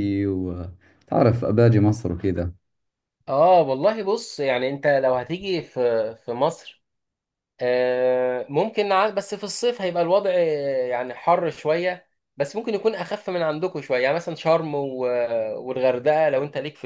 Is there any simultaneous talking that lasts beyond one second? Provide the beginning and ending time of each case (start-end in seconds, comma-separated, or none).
none